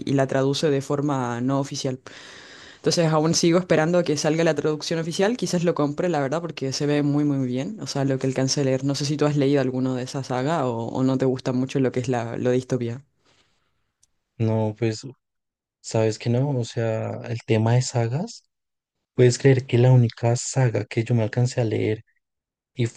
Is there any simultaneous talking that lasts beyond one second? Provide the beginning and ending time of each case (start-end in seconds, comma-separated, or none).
none